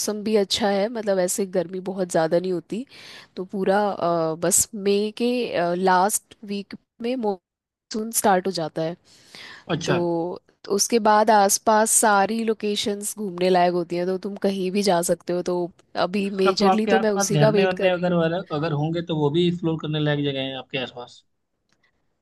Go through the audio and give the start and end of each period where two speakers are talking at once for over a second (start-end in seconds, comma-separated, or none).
16.4-18.1